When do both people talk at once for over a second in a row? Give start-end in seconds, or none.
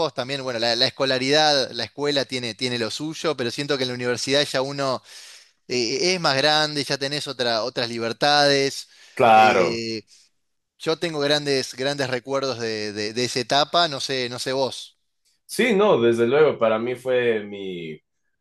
none